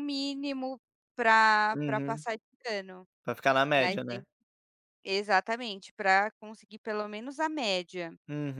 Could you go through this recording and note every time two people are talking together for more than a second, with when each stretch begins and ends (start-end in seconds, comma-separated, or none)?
none